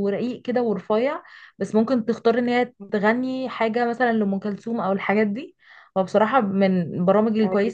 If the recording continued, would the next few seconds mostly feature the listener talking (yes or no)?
no